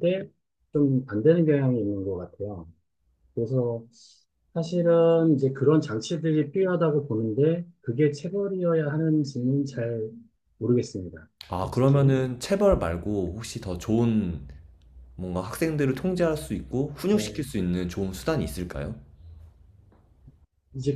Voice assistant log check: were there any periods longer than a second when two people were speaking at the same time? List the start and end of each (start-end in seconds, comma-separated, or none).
none